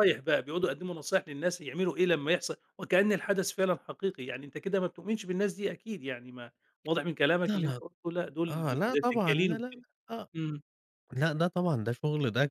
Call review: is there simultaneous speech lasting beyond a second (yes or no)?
yes